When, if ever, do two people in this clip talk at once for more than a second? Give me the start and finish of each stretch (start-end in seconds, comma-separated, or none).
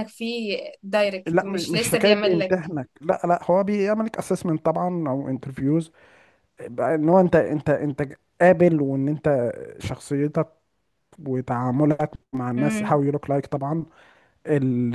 1.2-2.7